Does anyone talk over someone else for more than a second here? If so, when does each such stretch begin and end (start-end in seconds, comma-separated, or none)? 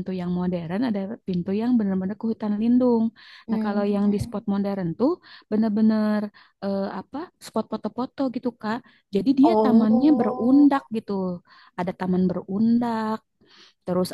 9.4-10.7